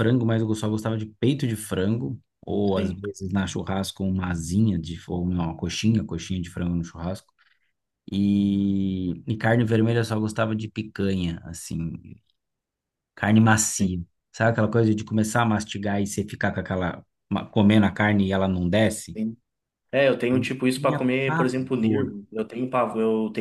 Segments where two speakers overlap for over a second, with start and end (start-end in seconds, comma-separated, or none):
20.3-22.2